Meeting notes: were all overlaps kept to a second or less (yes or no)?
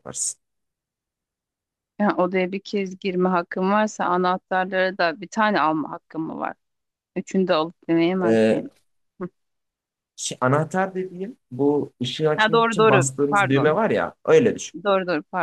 no